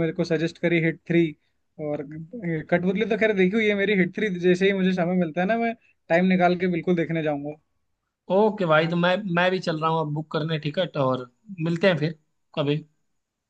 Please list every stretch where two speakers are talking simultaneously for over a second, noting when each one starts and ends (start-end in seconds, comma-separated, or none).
none